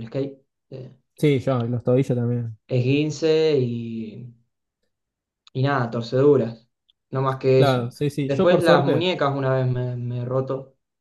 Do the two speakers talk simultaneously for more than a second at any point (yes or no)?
yes